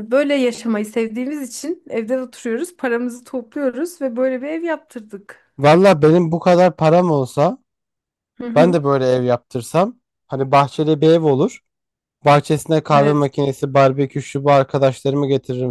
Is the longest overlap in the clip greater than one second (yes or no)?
no